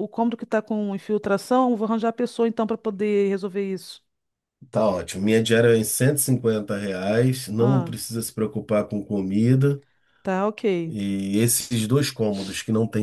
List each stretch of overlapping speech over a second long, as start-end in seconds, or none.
none